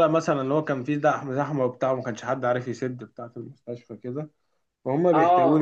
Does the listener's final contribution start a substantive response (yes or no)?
no